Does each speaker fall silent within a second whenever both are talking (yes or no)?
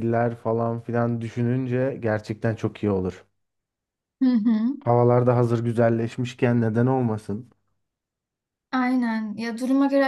yes